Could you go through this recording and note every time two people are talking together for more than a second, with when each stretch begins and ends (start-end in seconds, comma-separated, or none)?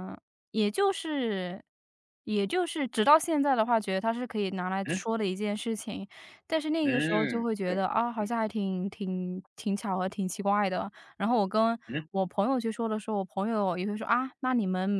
6.8-8.3